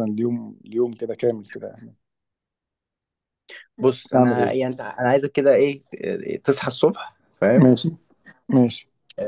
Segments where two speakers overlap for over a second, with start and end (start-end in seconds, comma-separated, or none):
none